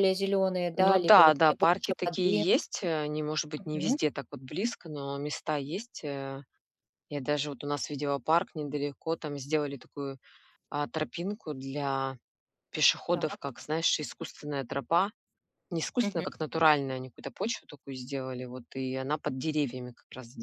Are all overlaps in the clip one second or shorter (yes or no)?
no